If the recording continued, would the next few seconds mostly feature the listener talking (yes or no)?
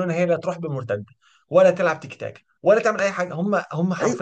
yes